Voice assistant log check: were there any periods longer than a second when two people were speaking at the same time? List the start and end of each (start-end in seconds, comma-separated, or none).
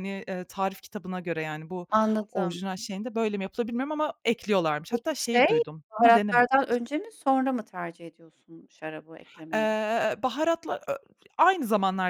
4.9-6.8